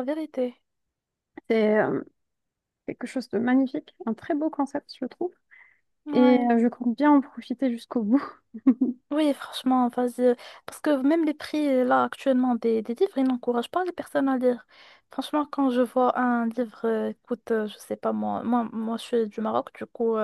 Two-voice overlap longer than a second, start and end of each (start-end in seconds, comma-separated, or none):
none